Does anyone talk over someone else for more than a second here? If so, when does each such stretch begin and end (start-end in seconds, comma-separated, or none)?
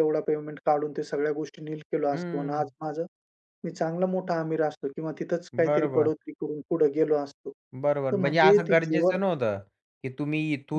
7.8-9.2